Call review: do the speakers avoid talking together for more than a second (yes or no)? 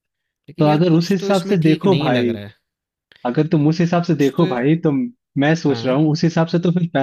no